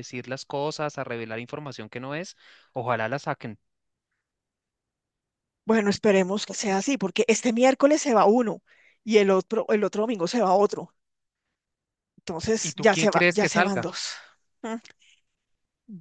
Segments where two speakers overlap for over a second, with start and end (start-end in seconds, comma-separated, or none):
12.6-13.9